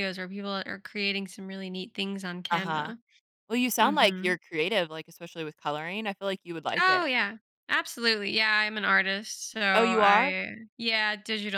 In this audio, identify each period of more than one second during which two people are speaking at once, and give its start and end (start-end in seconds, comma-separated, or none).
none